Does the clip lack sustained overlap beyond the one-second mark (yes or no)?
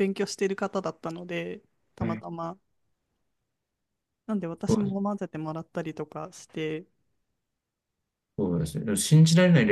yes